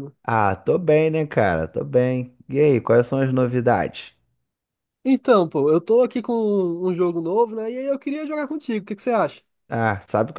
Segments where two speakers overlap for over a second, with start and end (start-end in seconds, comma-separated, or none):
none